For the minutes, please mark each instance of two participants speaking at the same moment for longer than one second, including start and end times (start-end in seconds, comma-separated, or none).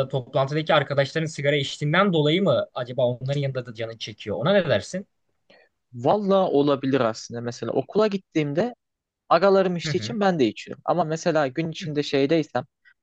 none